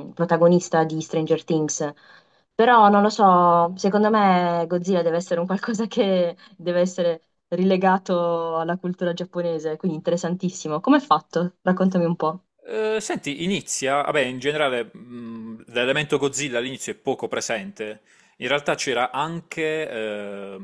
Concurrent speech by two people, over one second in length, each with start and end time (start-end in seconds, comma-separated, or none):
none